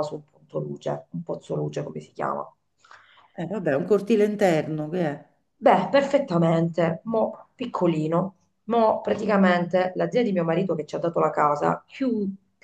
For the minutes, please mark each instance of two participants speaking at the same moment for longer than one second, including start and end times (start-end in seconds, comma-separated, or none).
none